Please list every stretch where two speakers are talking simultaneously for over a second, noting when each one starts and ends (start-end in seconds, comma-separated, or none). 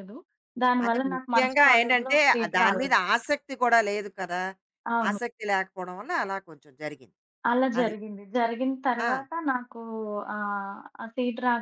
0.8-3.0